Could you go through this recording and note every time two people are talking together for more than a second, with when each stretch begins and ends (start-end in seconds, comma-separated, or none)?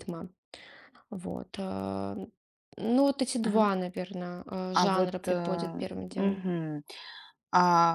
4.7-6.4